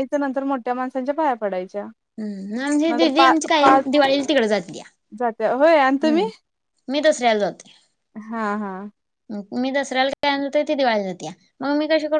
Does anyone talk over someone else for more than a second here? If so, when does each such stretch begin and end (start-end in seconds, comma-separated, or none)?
none